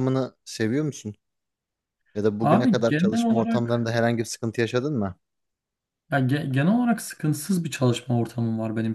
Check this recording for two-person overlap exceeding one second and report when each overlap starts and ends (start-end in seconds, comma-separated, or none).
2.4-3.9